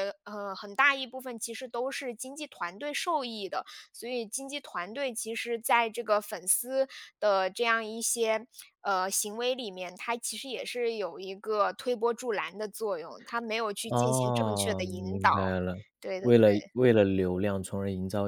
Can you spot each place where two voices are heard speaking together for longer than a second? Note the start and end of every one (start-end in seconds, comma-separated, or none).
13.9-15.5